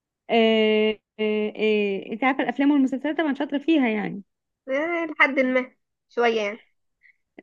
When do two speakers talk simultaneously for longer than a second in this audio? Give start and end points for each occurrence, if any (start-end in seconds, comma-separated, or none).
none